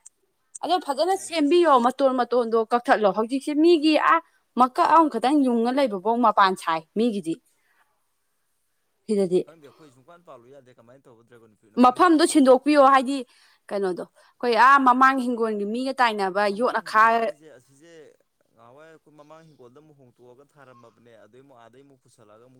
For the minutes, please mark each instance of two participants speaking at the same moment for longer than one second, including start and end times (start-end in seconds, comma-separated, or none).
none